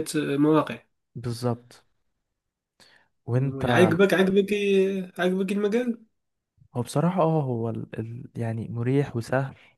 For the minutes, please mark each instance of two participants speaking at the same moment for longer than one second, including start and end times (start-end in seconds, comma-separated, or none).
none